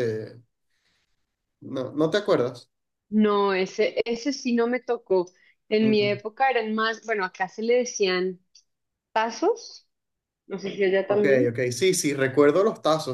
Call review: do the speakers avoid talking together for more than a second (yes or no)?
yes